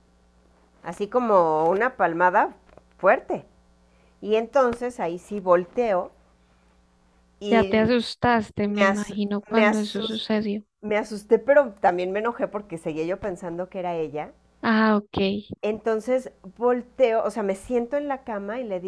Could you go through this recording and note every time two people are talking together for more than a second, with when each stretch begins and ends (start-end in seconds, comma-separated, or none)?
8.6-10.3